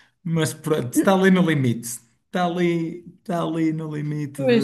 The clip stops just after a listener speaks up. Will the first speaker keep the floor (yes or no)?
no